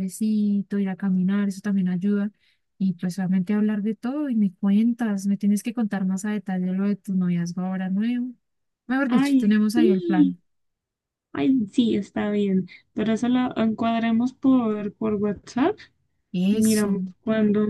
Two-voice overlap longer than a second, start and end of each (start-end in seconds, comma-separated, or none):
9.1-10.4